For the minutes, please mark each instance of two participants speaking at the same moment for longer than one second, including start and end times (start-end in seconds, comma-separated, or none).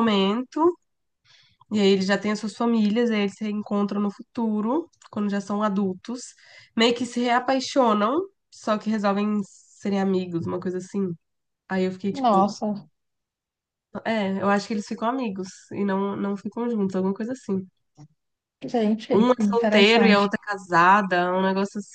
19.1-20.3